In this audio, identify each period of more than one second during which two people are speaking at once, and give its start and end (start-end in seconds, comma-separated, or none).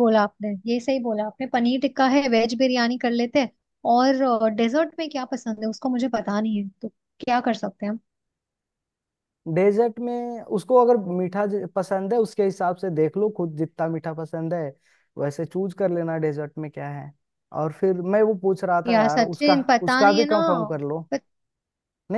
18.9-20.4